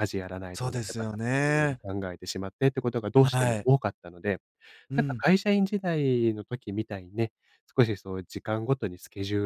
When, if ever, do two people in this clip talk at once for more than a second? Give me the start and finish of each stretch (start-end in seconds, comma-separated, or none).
0.5-1.8